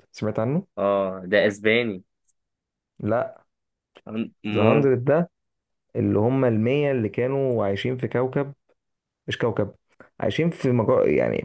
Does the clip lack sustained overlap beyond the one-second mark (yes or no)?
yes